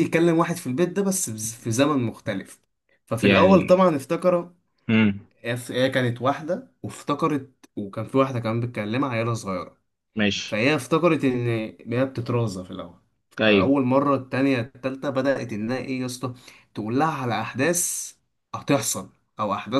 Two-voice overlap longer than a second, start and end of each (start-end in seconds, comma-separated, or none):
none